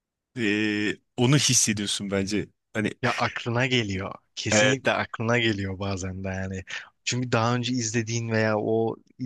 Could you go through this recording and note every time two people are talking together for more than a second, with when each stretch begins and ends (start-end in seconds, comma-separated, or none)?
none